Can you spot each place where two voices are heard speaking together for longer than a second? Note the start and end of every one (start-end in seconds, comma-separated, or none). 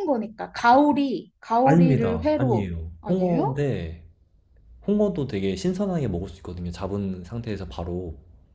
1.6-3.6